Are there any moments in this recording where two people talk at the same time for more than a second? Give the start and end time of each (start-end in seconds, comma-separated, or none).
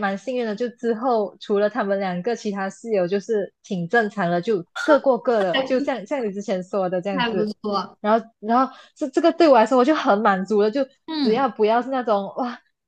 none